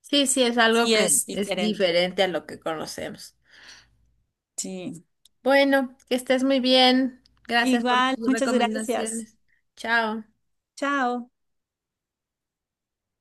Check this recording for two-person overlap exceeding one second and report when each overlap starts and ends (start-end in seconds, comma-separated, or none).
0.7-1.9, 7.6-9.3